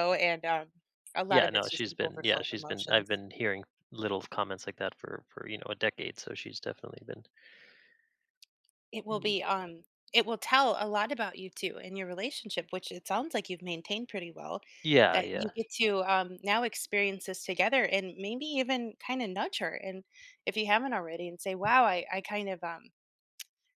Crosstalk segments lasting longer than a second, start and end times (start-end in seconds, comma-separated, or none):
1.3-3.1